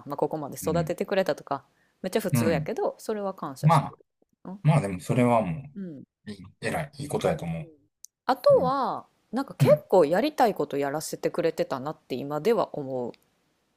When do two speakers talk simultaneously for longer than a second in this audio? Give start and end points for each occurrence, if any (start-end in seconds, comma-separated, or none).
none